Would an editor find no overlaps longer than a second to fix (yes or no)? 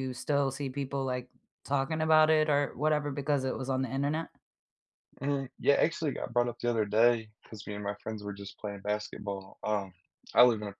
yes